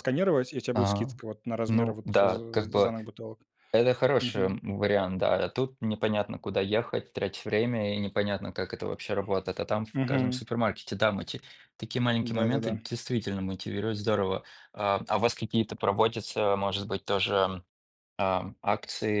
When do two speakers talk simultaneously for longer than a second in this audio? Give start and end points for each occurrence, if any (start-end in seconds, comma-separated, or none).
1.7-2.9